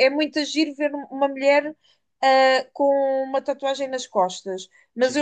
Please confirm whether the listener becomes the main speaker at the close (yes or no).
no